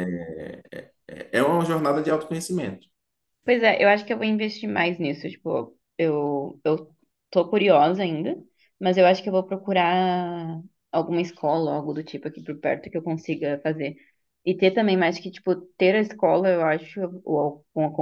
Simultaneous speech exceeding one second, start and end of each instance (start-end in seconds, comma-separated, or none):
none